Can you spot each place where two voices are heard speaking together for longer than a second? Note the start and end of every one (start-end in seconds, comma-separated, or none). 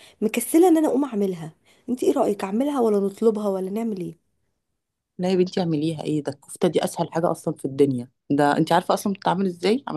none